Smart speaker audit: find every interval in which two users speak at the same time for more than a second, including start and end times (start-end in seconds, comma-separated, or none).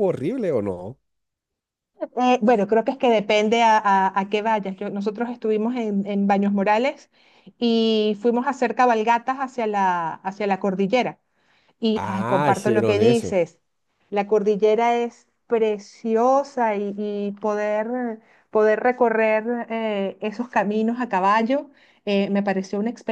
11.9-13.3